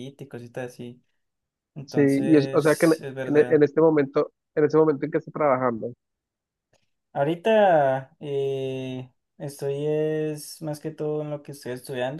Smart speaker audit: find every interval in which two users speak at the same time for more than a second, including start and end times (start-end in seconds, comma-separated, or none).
1.9-3.6